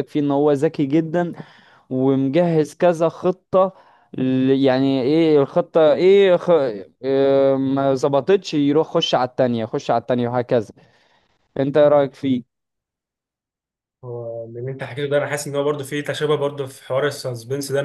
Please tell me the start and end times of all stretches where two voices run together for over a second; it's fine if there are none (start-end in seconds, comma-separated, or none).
none